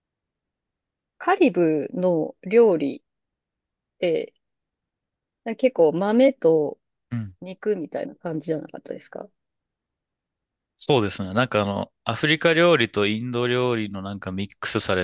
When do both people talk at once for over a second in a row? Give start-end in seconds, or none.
none